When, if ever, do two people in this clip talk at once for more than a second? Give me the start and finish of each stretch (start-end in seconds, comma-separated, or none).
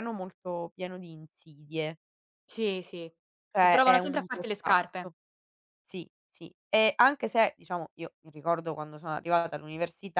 3.6-5.1